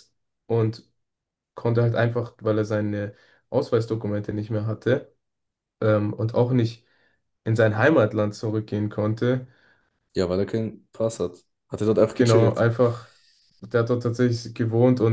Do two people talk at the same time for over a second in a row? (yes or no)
no